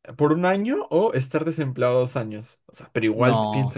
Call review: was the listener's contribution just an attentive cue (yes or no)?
yes